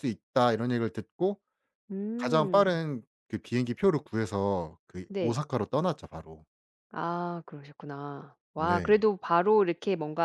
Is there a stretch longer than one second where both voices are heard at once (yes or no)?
no